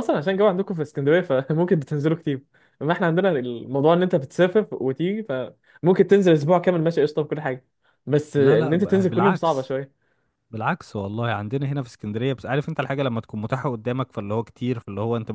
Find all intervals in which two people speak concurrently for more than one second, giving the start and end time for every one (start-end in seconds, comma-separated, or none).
8.4-9.8